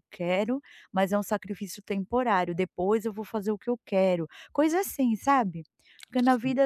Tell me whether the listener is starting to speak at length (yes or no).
no